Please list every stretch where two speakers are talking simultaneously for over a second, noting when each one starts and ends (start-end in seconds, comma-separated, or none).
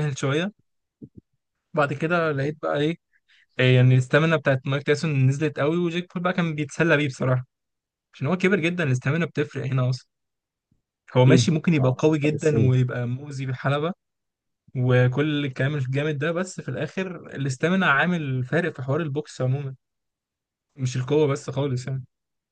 11.2-12.7